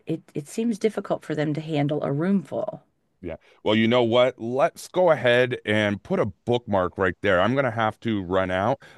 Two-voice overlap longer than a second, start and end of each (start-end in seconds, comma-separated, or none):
none